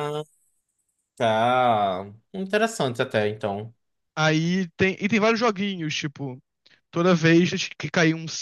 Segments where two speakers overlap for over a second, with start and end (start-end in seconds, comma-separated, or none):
none